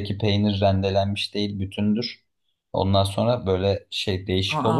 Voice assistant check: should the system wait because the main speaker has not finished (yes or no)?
yes